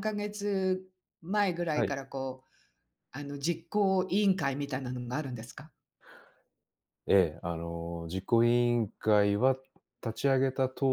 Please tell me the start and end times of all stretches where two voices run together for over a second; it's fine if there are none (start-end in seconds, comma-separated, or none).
none